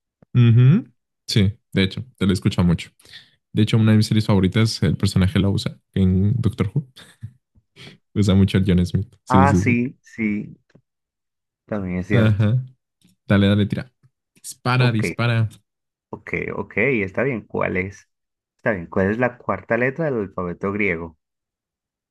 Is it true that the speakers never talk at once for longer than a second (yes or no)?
yes